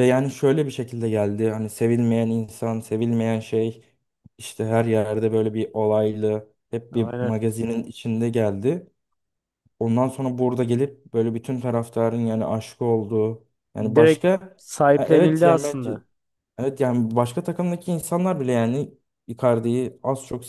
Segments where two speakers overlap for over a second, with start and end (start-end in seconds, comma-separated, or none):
13.8-16.0